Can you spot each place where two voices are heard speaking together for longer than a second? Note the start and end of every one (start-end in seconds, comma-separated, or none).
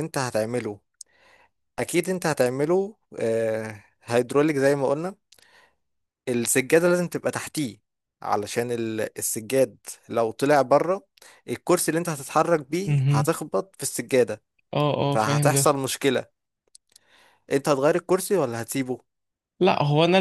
none